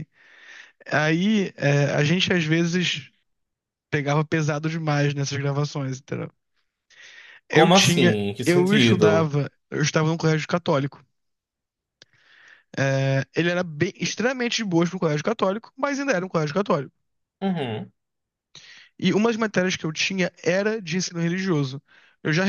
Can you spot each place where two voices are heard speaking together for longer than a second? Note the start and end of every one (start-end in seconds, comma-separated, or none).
7.5-9.3